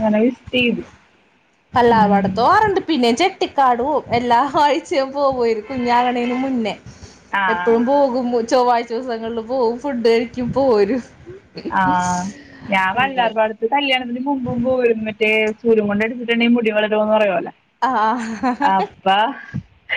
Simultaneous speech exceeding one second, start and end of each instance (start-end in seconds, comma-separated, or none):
none